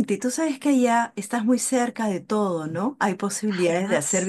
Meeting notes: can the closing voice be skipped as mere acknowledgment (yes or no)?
yes